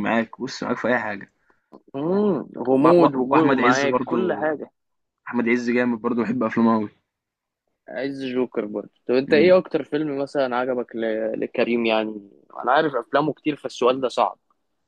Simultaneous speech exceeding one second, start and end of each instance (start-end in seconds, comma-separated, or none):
2.8-4.5